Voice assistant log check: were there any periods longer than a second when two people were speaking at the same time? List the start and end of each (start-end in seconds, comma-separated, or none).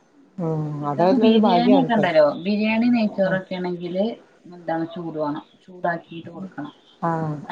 0.9-2.3